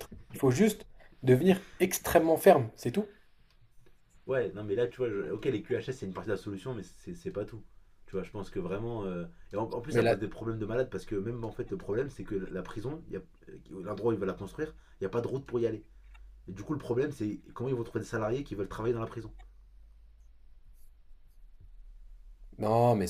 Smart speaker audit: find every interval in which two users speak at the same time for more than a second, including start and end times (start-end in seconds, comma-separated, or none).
none